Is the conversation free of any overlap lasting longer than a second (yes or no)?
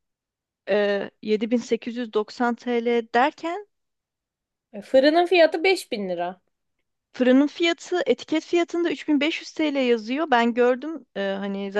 yes